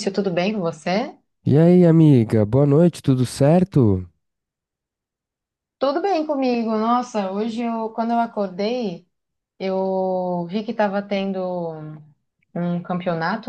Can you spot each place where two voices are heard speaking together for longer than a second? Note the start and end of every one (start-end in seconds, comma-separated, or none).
none